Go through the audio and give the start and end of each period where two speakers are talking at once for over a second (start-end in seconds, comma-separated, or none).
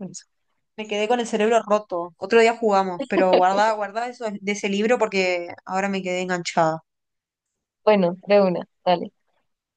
none